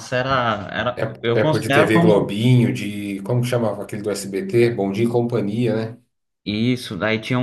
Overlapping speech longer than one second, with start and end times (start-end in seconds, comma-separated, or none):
1.0-2.4